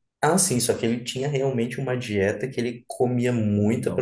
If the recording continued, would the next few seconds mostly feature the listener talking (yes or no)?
no